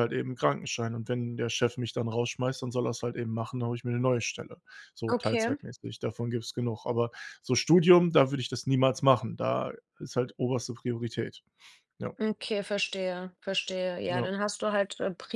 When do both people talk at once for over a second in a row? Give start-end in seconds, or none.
none